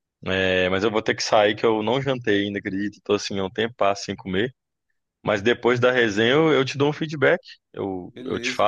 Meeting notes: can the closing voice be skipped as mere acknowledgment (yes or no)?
yes